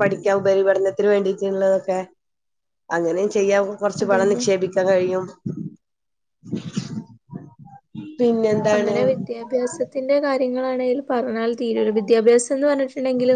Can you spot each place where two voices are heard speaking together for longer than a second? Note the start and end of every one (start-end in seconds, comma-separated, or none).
none